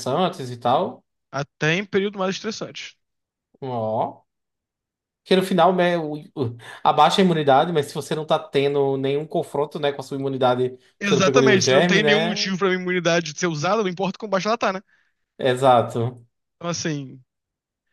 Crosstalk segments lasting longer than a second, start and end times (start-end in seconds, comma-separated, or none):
11.0-12.5